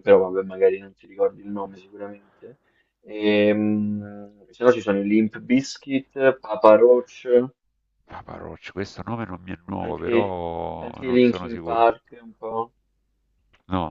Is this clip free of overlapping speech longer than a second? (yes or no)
no